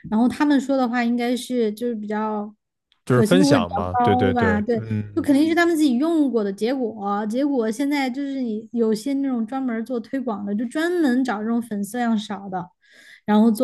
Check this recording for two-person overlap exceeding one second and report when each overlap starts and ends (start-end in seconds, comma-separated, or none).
3.0-5.3